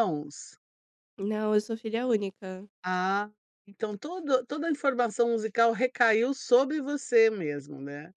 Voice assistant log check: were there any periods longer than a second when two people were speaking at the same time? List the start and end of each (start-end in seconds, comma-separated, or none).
none